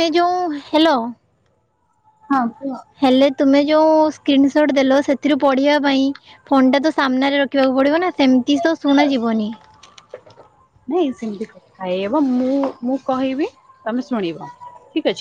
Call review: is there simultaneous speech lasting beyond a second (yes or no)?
no